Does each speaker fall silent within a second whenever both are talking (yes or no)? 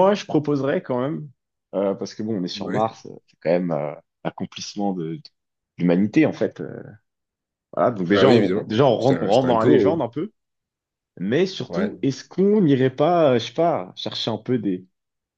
no